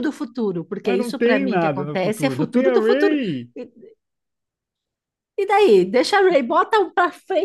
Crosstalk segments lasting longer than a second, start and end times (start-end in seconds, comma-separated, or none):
0.8-3.2